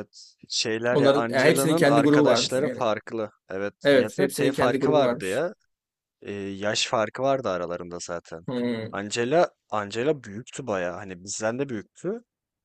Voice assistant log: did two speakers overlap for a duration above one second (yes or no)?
yes